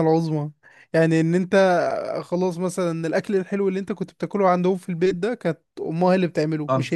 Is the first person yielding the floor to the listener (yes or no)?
no